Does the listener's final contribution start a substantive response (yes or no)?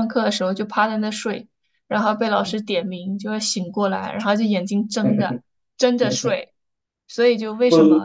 no